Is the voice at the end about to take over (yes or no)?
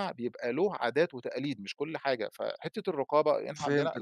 yes